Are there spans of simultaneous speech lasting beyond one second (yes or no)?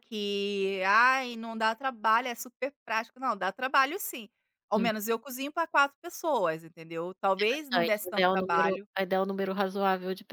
yes